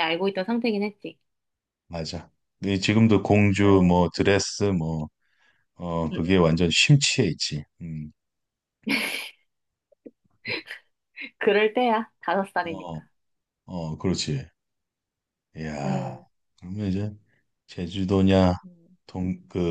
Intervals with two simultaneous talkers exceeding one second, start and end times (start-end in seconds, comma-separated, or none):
none